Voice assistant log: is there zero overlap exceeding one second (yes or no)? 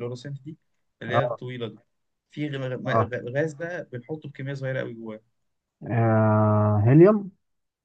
yes